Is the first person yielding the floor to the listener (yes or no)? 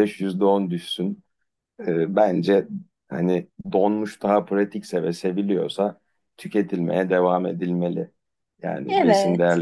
no